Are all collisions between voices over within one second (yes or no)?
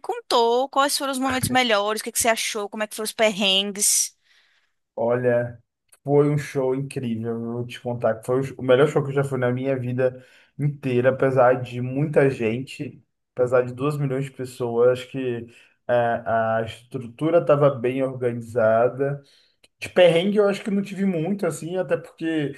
yes